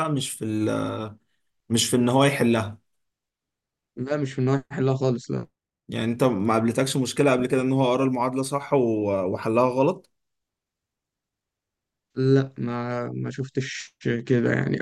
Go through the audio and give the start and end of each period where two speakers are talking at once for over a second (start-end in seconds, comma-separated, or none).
none